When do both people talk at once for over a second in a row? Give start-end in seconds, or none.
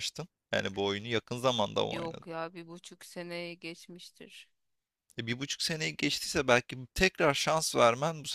none